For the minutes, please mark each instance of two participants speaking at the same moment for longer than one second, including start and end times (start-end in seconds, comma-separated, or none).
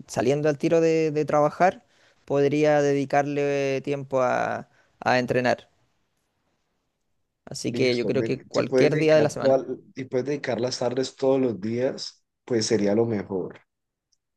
7.7-9.6